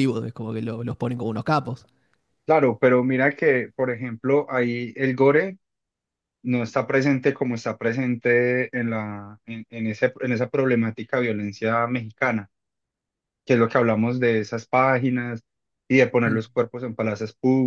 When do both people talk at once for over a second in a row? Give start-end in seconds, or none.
none